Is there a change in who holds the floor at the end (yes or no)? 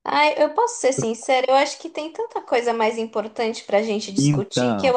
no